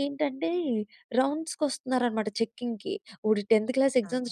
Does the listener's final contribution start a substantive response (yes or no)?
no